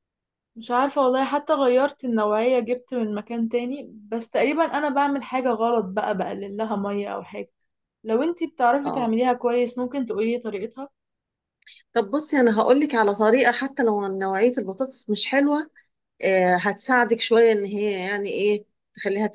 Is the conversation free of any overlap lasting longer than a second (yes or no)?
yes